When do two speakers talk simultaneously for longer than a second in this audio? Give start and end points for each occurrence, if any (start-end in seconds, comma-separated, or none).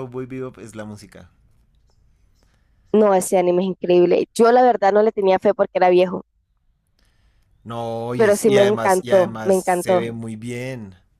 8.2-10.1